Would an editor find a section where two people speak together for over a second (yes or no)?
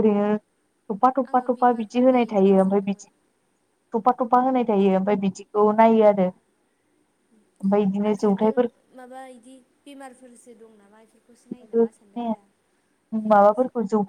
yes